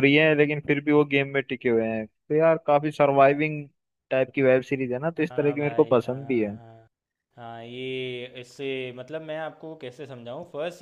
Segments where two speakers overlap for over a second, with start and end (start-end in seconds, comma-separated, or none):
5.3-6.6